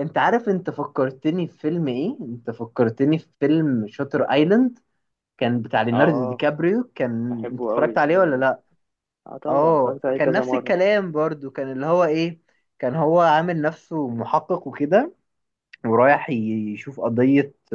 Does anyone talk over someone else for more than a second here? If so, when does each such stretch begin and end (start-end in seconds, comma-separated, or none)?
7.3-8.5, 9.5-10.8